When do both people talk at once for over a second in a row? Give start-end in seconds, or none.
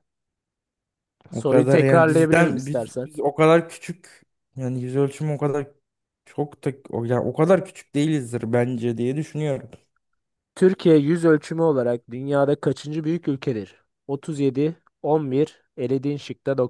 1.3-3.1